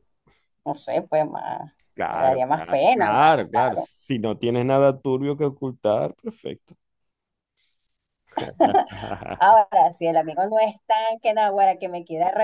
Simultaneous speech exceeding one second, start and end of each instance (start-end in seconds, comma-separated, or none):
2.1-3.9